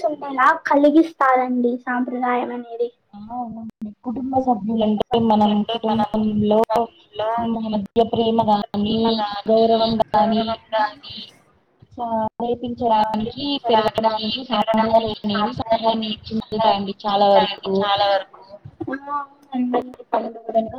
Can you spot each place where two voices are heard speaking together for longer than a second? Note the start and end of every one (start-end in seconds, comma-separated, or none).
13.1-17.2